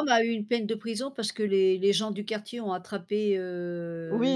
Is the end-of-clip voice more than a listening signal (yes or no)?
yes